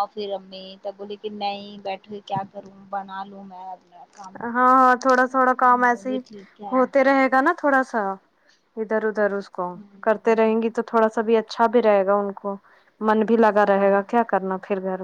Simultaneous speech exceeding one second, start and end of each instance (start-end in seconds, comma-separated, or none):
none